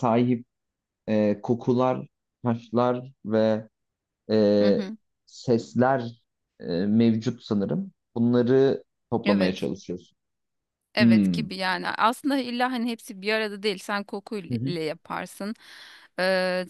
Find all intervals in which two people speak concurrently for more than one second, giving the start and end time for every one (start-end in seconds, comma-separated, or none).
none